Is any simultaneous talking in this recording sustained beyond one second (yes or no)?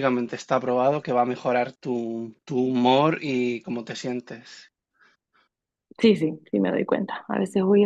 no